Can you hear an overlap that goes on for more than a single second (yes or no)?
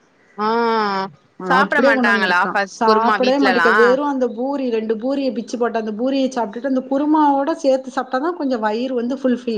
yes